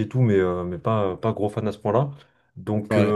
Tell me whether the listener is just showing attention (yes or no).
yes